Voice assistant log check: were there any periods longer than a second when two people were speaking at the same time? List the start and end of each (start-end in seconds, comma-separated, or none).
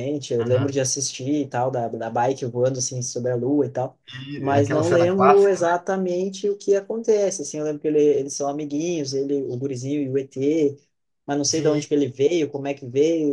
4.4-5.7